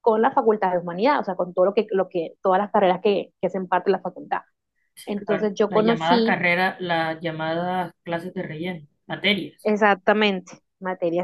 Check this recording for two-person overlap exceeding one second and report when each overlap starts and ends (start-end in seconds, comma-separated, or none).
5.1-6.4